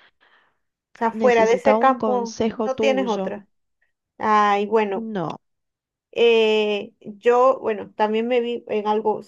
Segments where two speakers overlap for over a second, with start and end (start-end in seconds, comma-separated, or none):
1.1-3.3